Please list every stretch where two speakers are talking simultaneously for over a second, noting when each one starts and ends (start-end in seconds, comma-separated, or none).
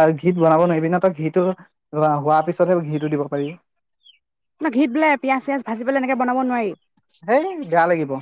none